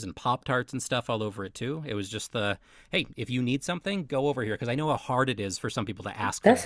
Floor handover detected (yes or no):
yes